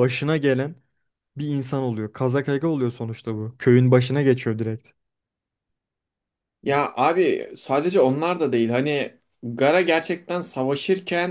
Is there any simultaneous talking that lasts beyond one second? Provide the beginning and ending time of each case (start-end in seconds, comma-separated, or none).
none